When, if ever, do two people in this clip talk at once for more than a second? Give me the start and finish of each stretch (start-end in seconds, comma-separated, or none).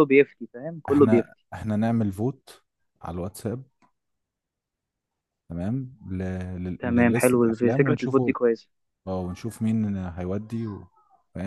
6.8-8.3